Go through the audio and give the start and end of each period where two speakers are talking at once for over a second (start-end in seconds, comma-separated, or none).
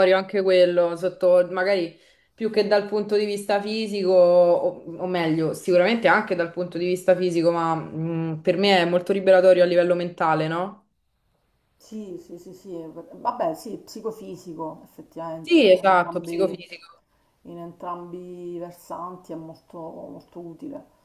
15.4-16.6